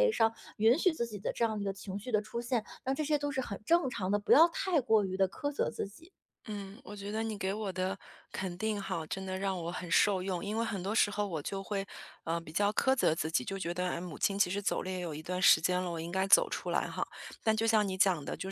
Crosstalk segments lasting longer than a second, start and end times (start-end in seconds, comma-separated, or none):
none